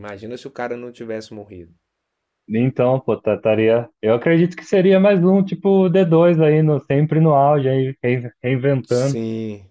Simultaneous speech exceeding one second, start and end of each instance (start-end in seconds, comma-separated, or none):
none